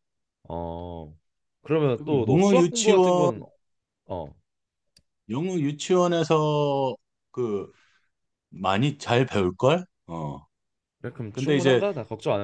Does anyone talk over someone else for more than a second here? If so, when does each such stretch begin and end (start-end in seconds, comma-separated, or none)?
1.9-3.3